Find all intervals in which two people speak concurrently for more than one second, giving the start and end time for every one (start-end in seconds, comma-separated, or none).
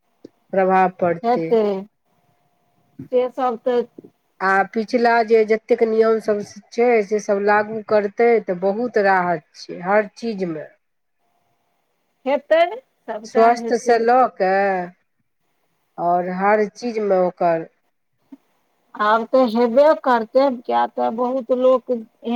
none